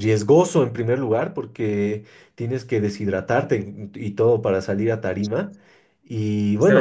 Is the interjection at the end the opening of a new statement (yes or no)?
yes